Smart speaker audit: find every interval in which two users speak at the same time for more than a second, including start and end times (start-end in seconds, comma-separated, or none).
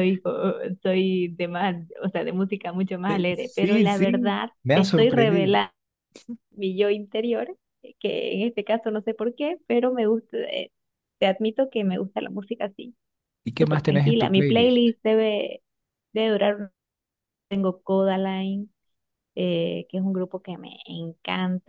3.6-5.6, 13.6-14.8